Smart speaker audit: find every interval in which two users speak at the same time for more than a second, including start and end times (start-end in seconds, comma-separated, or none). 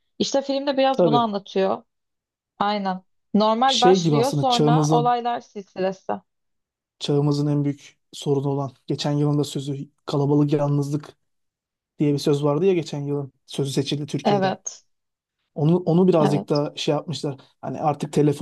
3.7-5.1